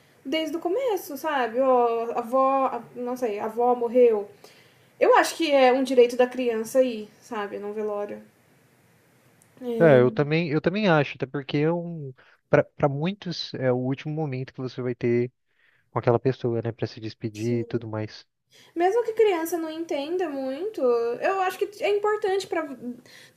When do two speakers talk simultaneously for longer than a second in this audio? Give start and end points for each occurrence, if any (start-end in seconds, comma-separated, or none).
none